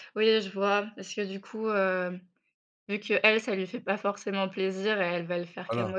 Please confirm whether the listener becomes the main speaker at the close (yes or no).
no